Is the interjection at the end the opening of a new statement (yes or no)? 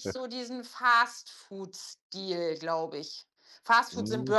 yes